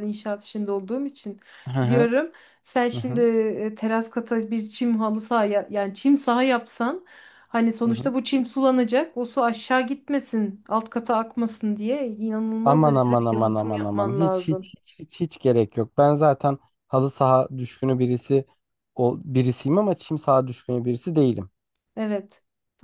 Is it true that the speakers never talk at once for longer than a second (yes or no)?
no